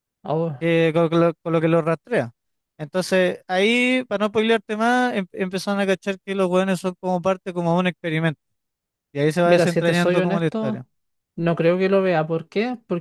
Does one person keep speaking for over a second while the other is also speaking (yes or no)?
yes